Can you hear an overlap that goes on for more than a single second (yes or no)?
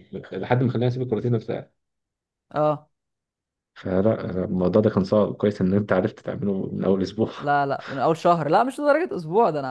no